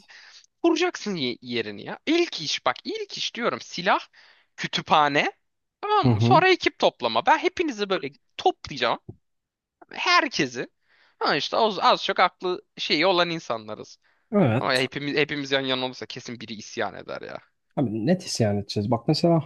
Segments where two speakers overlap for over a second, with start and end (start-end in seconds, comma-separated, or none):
none